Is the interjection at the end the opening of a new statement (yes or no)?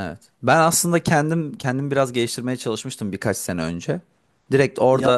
no